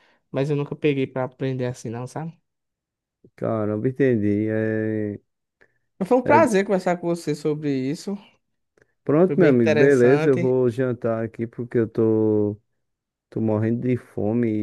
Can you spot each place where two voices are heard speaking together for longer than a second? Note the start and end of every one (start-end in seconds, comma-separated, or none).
9.2-10.6